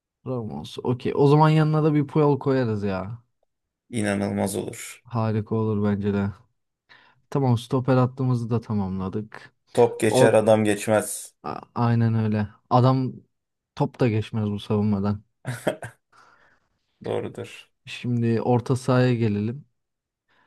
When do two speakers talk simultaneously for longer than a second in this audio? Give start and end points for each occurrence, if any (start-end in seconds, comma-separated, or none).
none